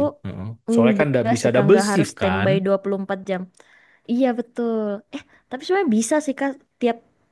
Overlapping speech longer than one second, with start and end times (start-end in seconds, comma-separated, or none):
0.7-2.5